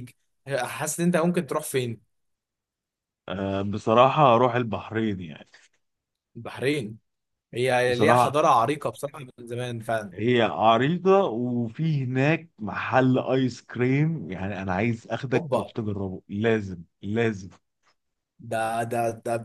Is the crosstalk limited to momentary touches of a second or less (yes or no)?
yes